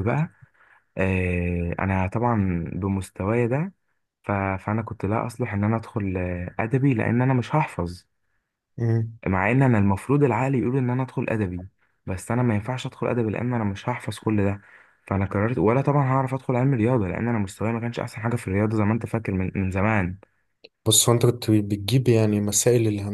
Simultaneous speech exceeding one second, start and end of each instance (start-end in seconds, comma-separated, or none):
none